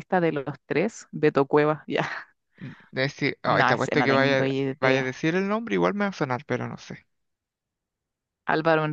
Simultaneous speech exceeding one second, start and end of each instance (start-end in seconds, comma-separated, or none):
3.5-5.2